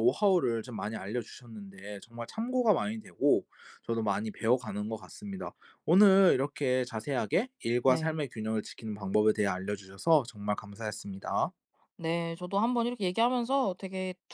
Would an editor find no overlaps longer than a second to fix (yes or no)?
yes